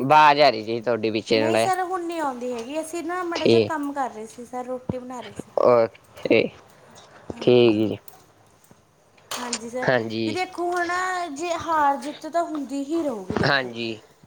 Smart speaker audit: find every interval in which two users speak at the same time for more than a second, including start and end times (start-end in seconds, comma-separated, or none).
none